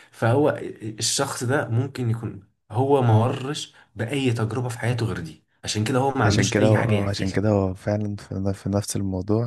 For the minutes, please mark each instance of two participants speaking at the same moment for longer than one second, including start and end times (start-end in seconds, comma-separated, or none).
6.2-7.5